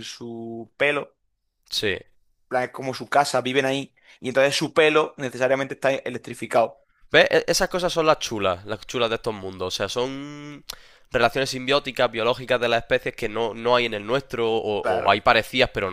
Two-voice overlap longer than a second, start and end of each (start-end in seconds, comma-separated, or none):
none